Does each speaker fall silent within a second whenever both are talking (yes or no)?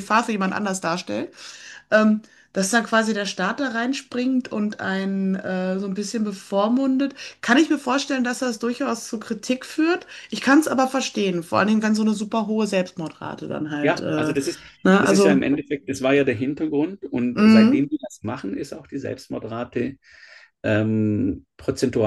yes